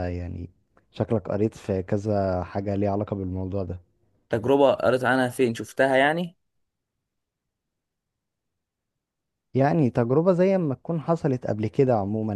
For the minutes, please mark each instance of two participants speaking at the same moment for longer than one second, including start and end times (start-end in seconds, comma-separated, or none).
none